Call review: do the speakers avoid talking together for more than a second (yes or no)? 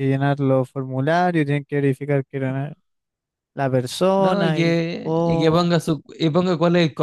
no